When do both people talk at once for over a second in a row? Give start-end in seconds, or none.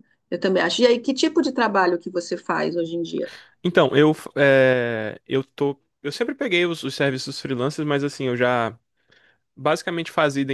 none